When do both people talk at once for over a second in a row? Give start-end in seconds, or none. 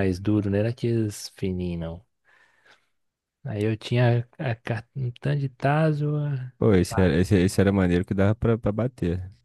none